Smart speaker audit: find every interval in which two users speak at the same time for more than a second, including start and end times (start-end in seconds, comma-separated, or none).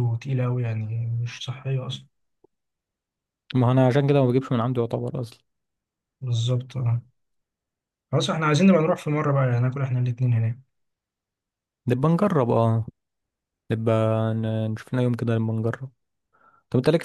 none